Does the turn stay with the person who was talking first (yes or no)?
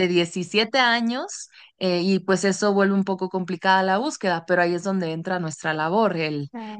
yes